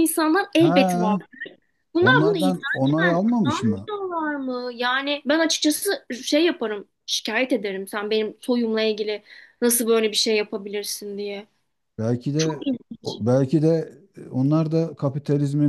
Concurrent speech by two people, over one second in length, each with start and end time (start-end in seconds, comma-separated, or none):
2.0-3.9